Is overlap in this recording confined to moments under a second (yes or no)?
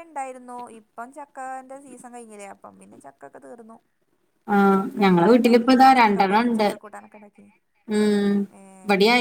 no